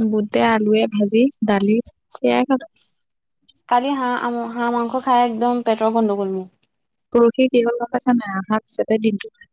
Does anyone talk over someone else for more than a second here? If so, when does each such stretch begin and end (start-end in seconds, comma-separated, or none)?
none